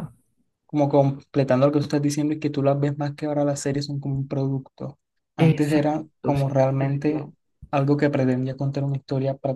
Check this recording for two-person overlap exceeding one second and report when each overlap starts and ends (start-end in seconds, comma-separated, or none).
5.4-7.3